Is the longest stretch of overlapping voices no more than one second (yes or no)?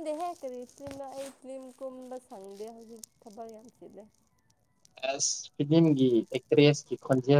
yes